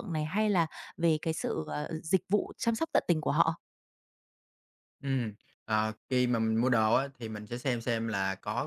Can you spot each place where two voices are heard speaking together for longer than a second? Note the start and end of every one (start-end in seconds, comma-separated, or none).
none